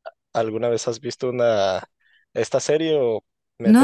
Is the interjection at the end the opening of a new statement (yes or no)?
yes